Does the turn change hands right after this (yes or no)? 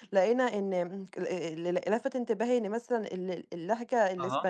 no